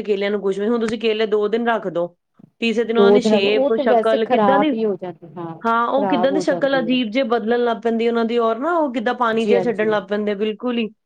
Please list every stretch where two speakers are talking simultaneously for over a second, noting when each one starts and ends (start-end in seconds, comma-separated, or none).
3.0-4.7, 5.7-7.0